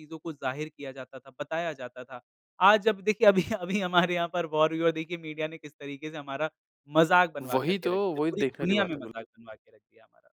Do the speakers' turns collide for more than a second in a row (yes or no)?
yes